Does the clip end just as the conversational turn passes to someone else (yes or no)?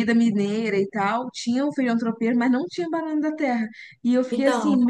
no